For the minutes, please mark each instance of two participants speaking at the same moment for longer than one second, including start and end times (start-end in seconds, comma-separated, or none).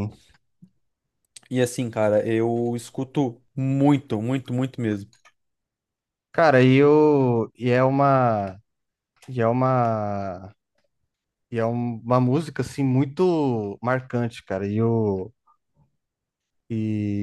none